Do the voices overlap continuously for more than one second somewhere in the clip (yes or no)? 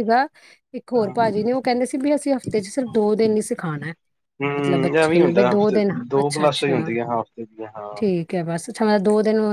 yes